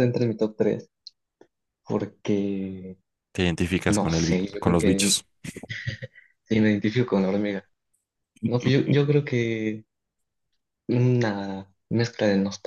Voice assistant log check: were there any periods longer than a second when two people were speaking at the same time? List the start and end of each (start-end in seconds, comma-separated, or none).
3.9-5.2